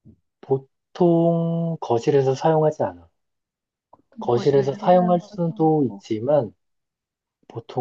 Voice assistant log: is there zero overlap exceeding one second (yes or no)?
no